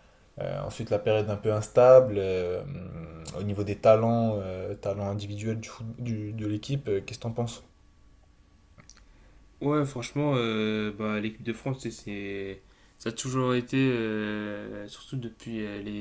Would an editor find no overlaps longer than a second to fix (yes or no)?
yes